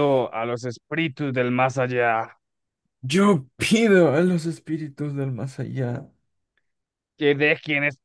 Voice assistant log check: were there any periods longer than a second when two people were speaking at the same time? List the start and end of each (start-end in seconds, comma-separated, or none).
none